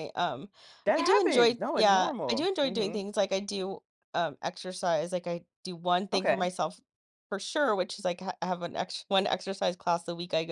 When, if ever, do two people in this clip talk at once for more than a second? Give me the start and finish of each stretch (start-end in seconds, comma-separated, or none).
1.0-3.0